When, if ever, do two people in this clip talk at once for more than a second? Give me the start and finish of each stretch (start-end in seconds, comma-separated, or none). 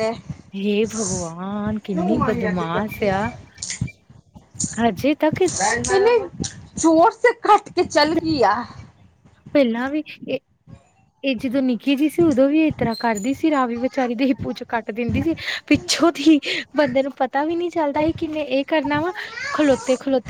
1.8-3.1